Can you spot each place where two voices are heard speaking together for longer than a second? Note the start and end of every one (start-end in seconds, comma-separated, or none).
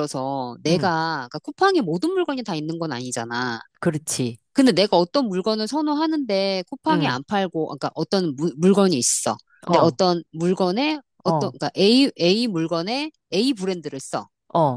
none